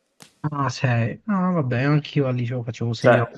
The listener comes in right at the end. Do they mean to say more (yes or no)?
yes